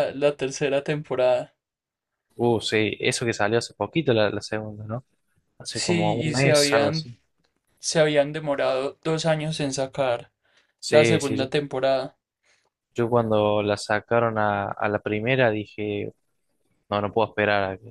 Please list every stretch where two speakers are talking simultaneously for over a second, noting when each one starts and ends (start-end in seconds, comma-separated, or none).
5.7-7.1